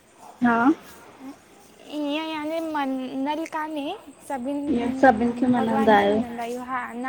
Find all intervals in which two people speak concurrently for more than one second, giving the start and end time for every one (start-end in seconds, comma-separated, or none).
4.8-6.2